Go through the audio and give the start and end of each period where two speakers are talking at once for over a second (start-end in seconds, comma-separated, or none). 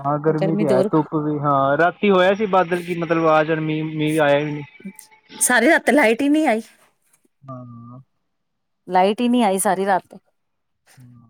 none